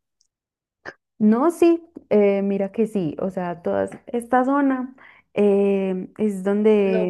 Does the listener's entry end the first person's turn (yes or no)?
yes